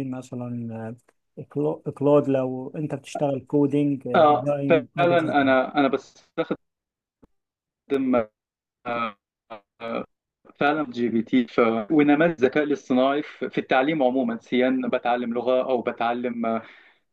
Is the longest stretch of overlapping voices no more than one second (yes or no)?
no